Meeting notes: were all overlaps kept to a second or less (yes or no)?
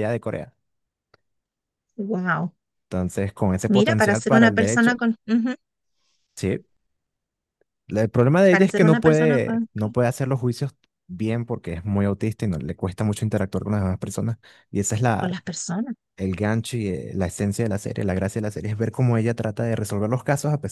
no